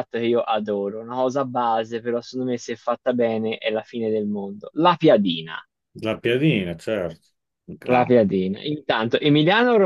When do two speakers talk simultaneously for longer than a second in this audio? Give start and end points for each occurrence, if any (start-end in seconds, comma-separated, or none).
none